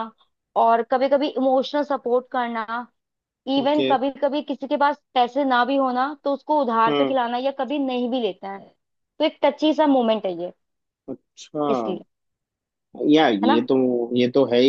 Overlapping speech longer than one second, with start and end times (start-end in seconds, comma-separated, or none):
none